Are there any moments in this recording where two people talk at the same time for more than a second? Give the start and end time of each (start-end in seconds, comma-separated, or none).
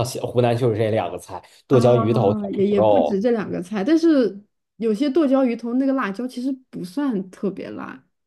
1.7-3.2